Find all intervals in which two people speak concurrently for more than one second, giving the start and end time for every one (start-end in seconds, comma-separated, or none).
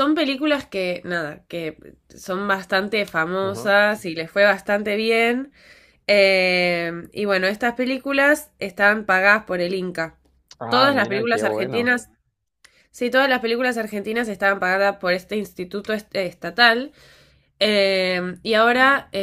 10.7-11.9